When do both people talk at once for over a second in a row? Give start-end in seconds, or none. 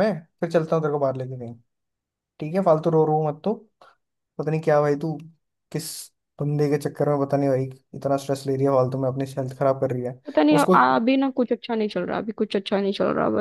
none